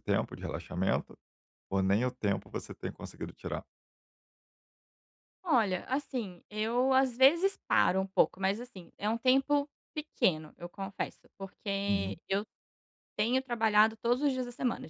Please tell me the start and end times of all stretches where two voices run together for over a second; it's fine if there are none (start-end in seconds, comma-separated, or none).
none